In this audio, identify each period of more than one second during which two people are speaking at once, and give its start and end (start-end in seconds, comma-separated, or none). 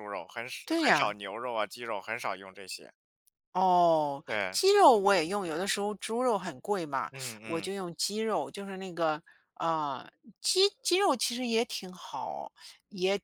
none